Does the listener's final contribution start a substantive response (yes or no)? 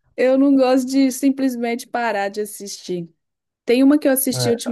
no